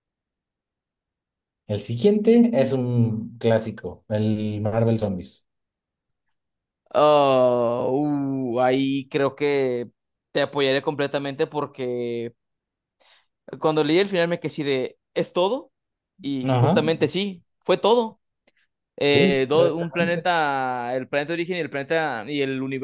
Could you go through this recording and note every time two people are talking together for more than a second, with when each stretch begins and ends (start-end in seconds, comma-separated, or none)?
19.0-20.3